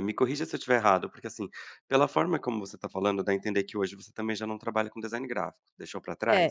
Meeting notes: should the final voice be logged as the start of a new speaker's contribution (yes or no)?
yes